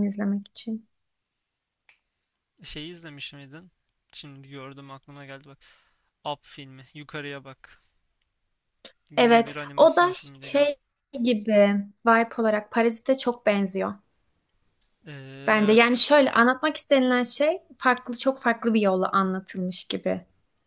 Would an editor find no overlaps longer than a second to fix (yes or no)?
no